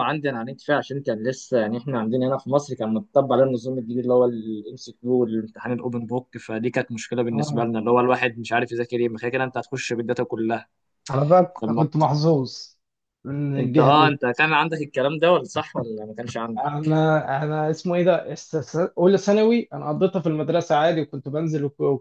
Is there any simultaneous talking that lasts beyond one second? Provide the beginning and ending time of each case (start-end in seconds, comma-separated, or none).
none